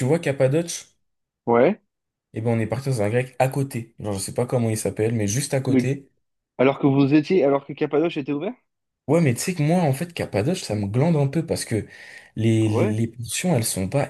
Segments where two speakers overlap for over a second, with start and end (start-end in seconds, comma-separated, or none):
none